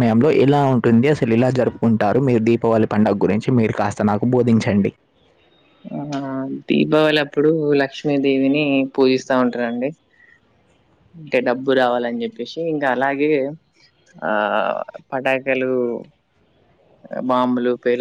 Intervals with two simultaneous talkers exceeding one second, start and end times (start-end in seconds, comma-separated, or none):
none